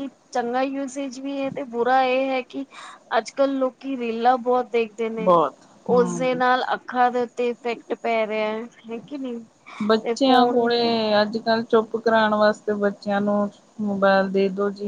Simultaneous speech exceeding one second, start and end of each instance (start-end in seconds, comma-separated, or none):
none